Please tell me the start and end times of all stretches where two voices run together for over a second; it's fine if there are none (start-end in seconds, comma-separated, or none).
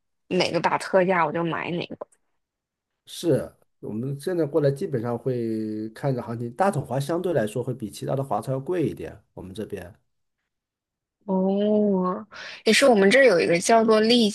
none